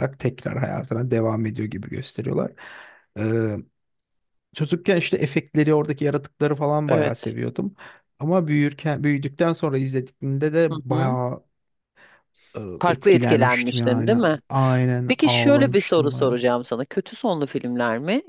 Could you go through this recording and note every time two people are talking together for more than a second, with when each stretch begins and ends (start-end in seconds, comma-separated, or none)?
12.8-14.4, 15.1-16.4